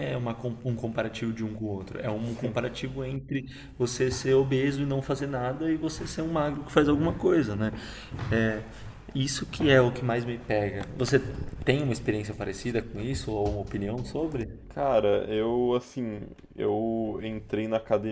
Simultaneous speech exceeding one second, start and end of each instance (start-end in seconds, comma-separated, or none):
none